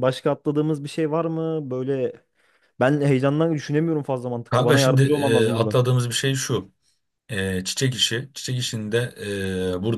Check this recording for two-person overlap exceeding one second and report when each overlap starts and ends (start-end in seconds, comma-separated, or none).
4.5-5.8